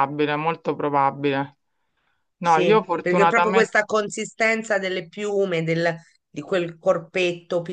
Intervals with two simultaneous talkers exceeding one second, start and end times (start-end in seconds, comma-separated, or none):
2.4-3.8